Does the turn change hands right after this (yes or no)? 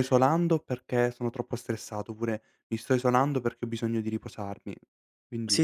yes